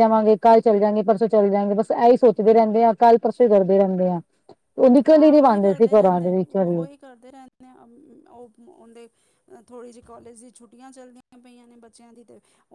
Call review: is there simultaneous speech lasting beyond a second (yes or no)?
yes